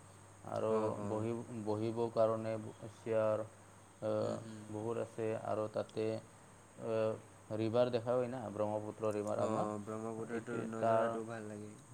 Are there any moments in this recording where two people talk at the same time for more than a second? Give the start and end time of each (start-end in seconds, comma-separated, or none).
9.5-11.1